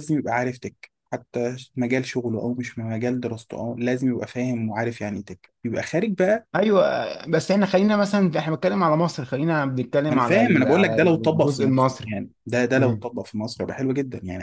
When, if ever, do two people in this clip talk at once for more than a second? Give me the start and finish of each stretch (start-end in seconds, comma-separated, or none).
10.1-12.1